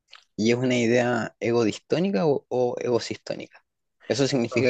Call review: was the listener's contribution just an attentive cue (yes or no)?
yes